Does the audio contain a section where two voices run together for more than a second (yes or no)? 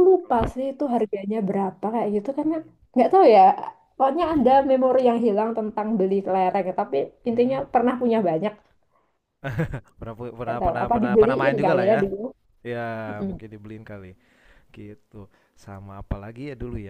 yes